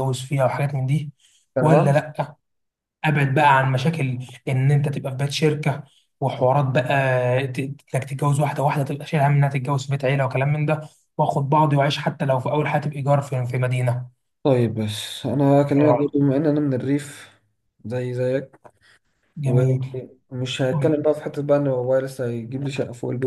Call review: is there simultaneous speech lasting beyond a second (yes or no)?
no